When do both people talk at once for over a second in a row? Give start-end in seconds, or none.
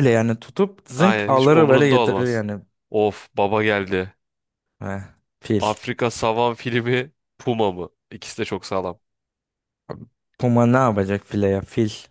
0.9-2.4